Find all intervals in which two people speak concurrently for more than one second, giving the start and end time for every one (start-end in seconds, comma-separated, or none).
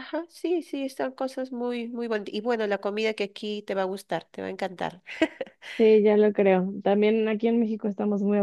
none